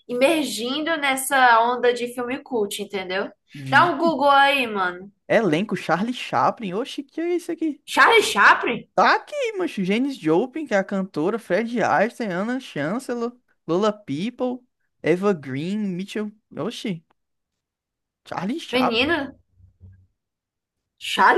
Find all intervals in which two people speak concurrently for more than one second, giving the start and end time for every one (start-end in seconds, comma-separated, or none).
none